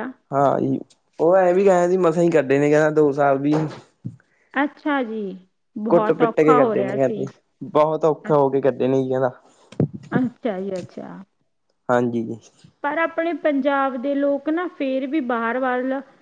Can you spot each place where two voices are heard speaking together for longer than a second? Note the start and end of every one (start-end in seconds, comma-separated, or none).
5.9-7.2